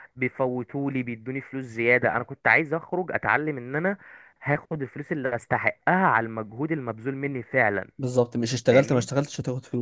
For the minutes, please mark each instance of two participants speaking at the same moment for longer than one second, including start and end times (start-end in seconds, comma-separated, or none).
none